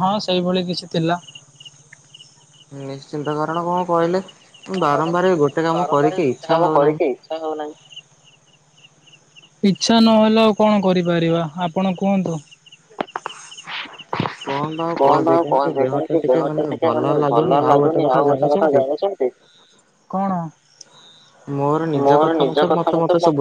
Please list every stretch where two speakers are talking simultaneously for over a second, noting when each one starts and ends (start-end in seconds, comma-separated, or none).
15.4-18.8